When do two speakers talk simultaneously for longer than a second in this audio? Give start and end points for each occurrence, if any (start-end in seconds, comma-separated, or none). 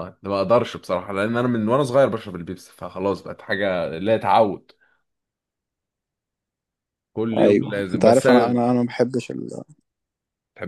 7.4-8.6